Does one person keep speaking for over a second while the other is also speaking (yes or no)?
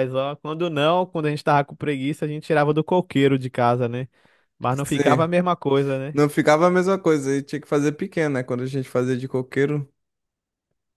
no